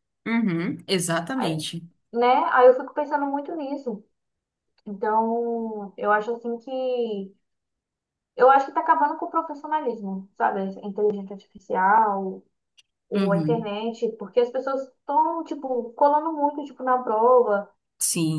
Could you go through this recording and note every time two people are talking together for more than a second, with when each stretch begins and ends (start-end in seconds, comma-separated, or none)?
none